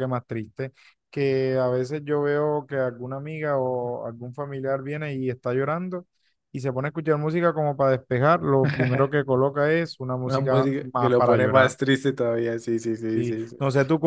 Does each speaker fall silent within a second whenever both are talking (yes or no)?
no